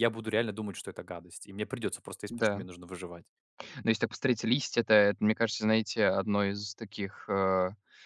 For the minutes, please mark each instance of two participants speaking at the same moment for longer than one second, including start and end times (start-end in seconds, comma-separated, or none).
none